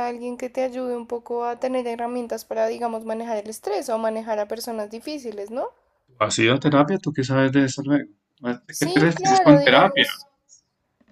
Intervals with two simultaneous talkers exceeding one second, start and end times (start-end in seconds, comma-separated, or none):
8.7-10.1